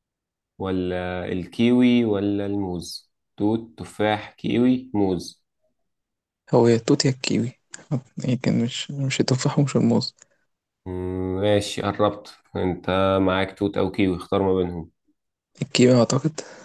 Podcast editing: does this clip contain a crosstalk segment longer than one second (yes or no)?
no